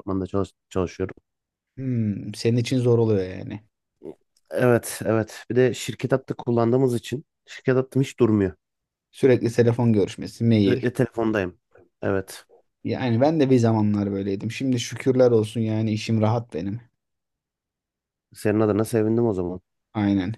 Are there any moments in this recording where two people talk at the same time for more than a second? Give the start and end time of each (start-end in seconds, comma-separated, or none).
none